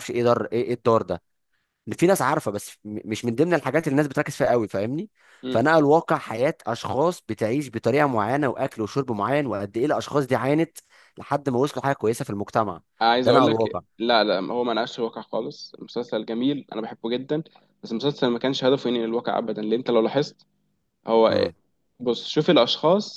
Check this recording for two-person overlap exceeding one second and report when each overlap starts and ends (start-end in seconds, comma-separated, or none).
none